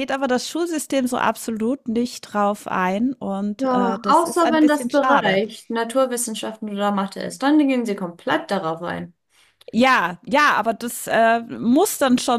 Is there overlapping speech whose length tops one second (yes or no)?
yes